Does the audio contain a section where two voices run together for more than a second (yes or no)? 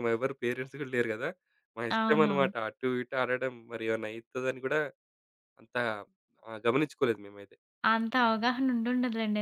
no